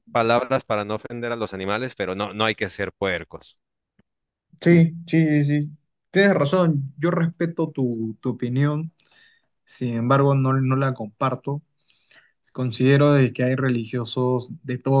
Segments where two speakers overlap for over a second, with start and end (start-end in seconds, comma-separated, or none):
none